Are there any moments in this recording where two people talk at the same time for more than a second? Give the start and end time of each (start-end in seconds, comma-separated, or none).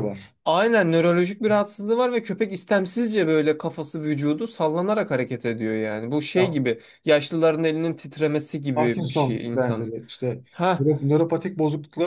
8.7-9.9